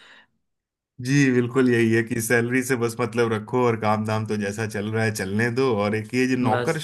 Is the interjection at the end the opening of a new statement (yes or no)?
no